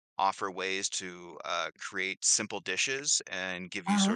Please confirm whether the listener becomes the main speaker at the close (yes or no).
no